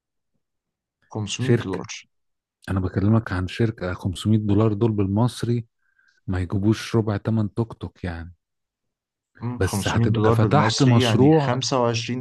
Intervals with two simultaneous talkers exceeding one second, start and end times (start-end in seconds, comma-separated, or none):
9.6-11.5